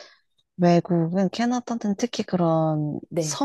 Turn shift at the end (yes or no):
no